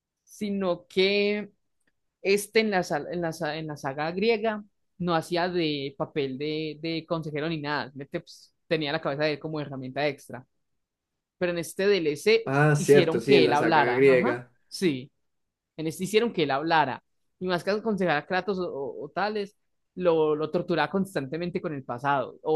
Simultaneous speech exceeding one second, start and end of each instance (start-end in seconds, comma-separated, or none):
12.4-14.5